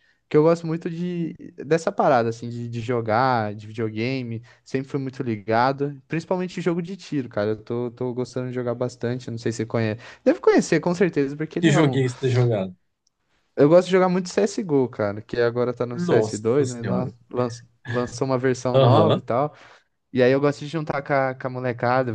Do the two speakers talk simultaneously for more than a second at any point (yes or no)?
yes